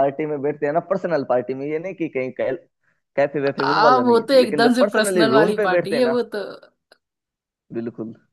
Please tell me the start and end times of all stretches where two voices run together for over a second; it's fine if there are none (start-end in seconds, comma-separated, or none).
3.7-6.2